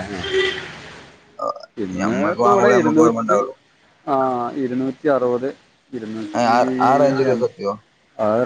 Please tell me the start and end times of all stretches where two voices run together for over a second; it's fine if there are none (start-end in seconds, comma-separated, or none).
1.8-3.4